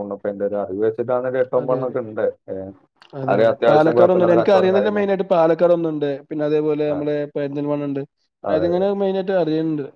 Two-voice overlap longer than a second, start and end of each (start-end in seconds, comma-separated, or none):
3.3-5.1